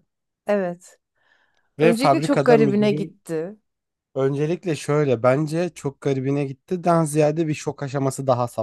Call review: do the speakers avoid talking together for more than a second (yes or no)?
no